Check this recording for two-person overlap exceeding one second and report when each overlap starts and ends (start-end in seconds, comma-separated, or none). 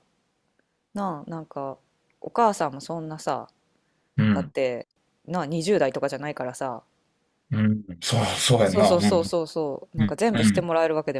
none